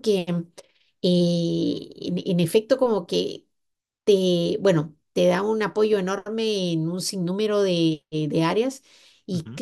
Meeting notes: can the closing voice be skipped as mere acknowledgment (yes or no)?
yes